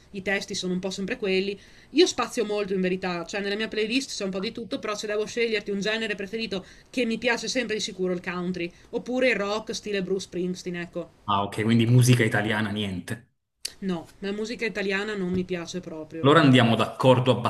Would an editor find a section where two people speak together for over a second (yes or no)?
no